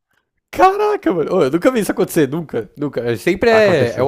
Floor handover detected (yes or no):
no